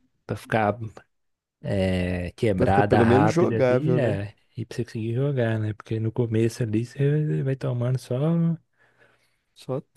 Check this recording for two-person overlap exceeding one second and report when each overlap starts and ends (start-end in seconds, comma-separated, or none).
2.5-4.2